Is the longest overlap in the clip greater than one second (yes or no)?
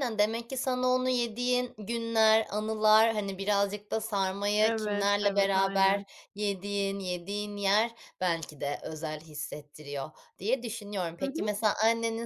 yes